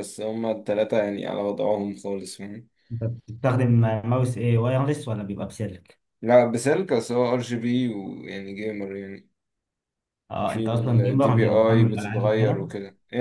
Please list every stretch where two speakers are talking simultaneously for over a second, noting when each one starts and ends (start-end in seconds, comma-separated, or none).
10.5-12.7